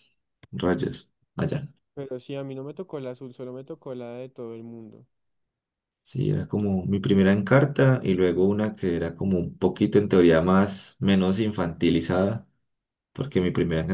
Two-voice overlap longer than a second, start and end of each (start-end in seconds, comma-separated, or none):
none